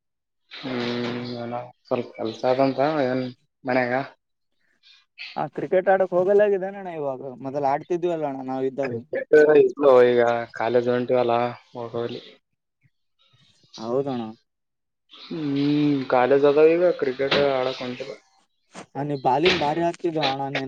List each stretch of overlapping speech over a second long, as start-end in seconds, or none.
none